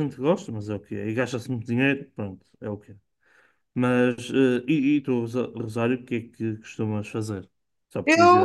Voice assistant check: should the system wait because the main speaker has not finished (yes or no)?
no